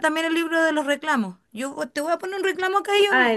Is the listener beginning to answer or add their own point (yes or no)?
yes